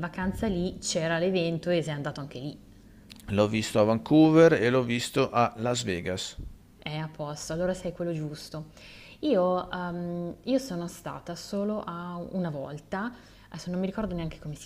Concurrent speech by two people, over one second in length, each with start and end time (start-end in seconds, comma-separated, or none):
none